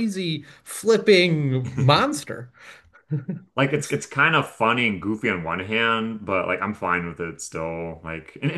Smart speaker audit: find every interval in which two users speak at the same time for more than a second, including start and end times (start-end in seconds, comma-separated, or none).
none